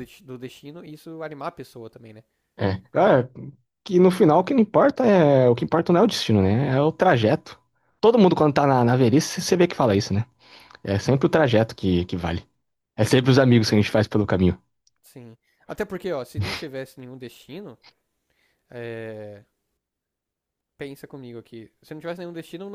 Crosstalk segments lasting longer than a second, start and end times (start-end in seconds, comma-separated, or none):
none